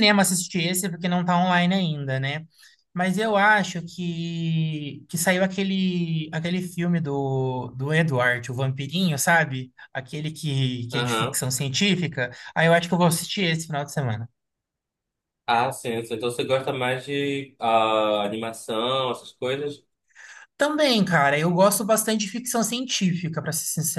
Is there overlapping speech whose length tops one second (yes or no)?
no